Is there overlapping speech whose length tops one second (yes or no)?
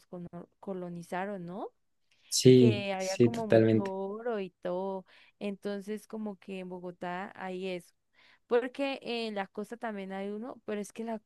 yes